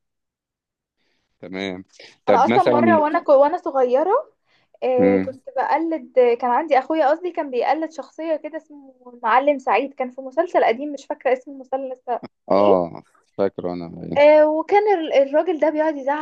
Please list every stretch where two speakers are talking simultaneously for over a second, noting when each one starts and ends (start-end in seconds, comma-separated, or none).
none